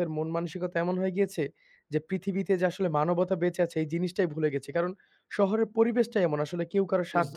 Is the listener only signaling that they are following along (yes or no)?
yes